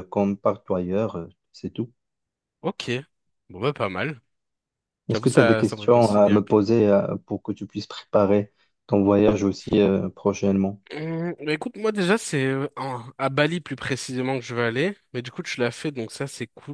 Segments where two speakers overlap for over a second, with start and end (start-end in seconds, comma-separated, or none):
5.1-6.6